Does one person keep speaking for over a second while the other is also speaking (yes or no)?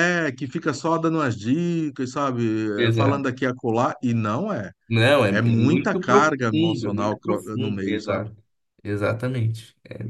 yes